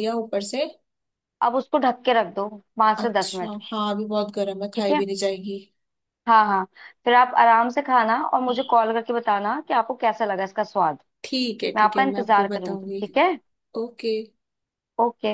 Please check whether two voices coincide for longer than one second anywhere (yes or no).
yes